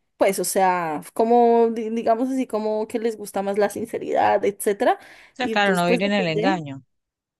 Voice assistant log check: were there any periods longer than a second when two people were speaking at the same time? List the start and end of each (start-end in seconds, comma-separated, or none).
5.4-6.7